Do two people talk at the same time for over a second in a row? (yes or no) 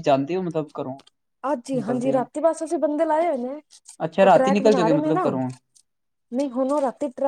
yes